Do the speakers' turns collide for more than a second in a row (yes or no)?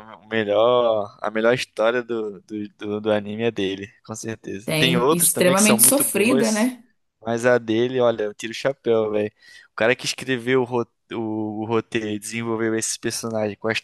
yes